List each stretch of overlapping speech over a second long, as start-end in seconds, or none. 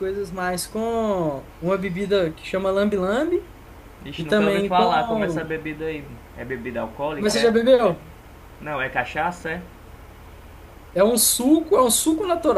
4.2-5.5